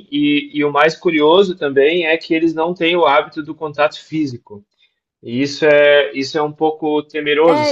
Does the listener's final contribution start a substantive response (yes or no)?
yes